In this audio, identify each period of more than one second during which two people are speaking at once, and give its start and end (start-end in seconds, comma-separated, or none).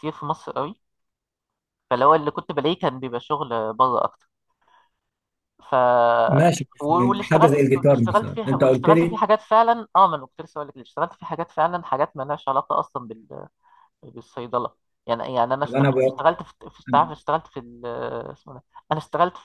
7.3-9.2